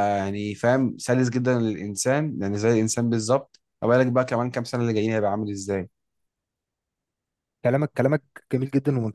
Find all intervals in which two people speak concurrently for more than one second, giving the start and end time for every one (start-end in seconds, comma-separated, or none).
none